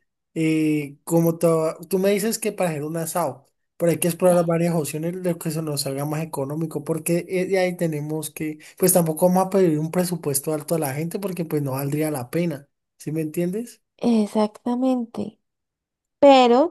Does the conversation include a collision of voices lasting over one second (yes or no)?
no